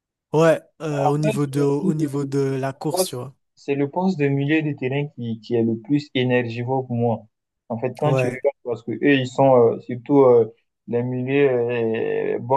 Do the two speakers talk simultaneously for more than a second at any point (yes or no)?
yes